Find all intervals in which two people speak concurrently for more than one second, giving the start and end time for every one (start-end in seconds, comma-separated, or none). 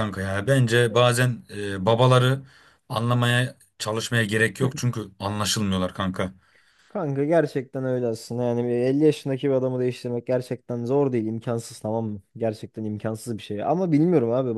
none